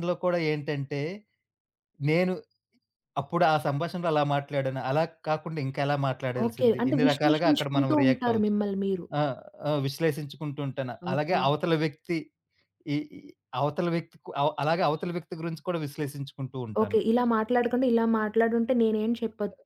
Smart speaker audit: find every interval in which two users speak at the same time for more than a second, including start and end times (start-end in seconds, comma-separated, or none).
6.4-8.5